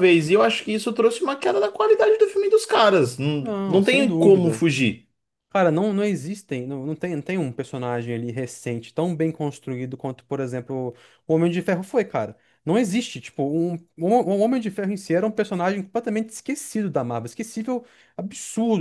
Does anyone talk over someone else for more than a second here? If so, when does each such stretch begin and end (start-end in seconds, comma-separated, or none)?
3.4-4.7